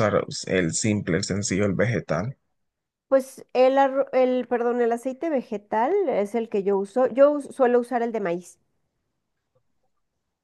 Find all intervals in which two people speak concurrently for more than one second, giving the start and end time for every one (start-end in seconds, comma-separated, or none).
none